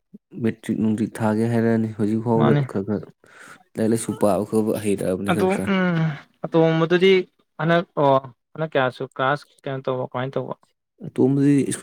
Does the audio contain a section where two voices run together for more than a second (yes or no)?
no